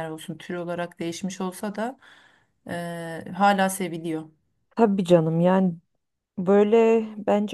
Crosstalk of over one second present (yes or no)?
no